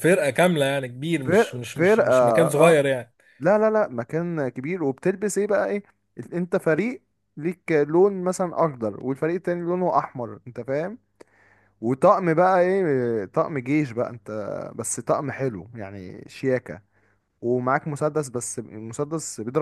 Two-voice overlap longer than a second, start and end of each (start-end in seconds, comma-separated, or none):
1.2-2.8